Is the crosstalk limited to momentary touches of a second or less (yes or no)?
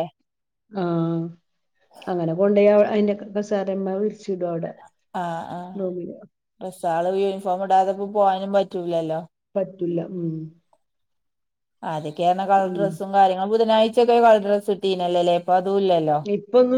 yes